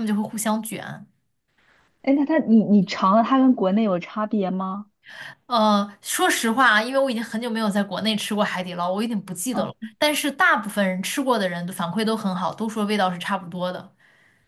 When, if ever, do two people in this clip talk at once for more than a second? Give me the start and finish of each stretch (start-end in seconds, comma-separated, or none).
none